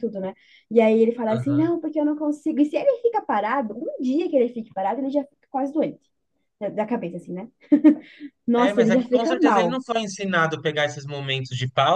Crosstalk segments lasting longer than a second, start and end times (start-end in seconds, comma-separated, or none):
8.6-9.8